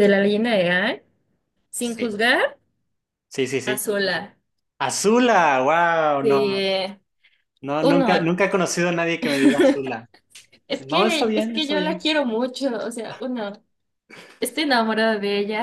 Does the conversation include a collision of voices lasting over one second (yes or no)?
yes